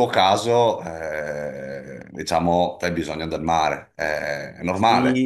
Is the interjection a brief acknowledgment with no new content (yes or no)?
no